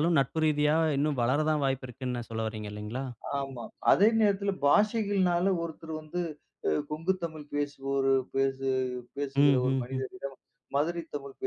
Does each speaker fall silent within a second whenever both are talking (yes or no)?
yes